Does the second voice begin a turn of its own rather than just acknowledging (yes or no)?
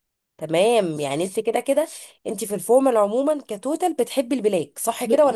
yes